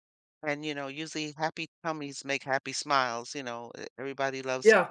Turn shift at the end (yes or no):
no